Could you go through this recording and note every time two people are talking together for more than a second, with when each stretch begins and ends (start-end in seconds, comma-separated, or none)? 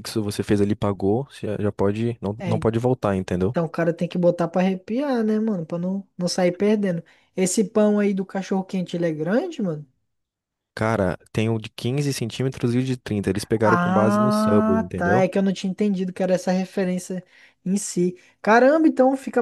13.6-15.3